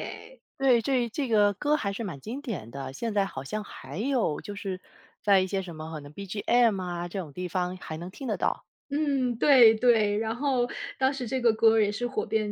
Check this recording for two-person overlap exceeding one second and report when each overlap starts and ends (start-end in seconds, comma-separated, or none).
none